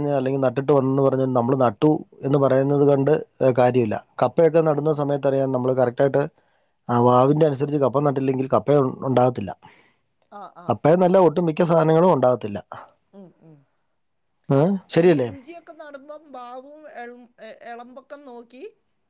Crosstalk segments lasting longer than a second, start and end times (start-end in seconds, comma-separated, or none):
none